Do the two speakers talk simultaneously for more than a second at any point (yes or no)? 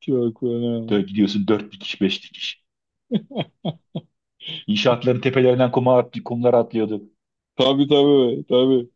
no